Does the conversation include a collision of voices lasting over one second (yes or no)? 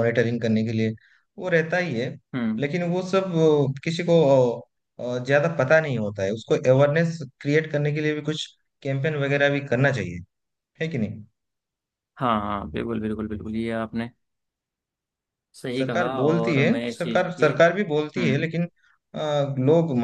yes